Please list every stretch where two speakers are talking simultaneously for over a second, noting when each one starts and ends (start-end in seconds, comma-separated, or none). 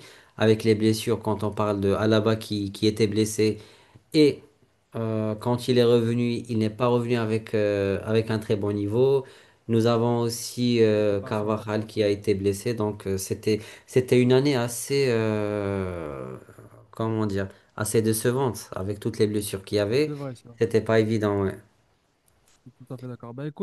10.9-12.2